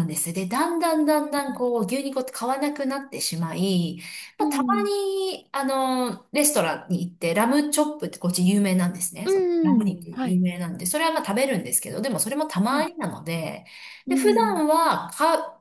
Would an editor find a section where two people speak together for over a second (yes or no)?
no